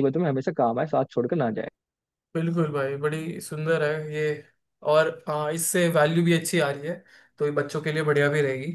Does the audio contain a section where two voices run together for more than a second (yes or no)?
no